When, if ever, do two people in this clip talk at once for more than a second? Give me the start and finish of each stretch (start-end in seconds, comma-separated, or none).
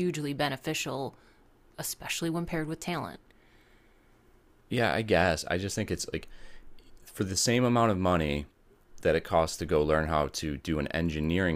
none